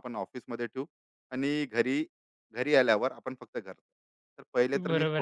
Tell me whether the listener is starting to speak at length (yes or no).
yes